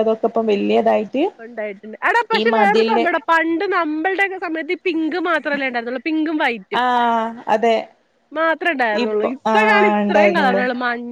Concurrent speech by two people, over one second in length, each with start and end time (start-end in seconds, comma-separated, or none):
9.1-10.6